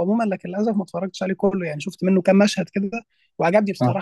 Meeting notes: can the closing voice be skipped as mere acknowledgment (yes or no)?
yes